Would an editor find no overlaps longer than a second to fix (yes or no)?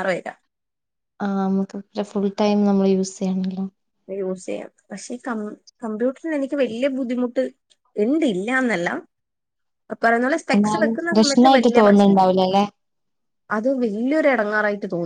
no